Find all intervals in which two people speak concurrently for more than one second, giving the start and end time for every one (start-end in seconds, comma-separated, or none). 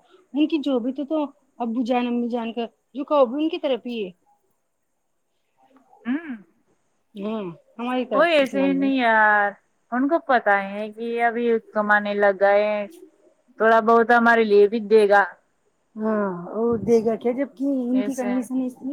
none